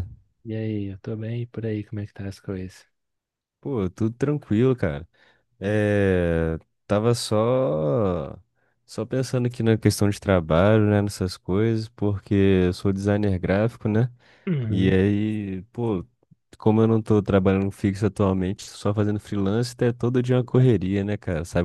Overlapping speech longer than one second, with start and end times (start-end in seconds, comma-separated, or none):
none